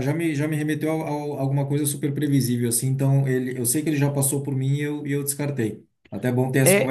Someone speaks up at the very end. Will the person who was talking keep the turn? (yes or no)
no